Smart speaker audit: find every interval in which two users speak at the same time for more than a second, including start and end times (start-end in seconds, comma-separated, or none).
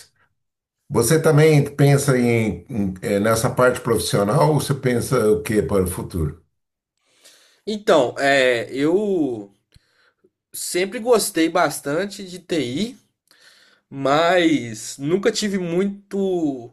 none